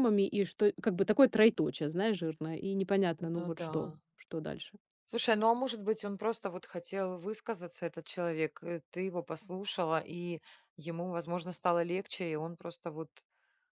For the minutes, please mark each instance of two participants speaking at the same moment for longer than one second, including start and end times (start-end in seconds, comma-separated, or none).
none